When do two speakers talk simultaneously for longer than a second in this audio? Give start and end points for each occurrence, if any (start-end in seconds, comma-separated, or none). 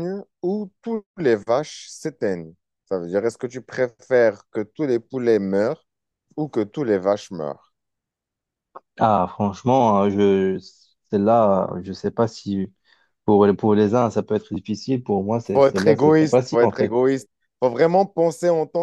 15.5-17.0